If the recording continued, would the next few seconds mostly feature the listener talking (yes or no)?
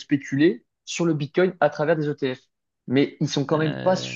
no